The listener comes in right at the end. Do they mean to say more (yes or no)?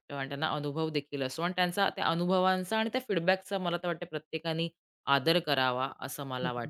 yes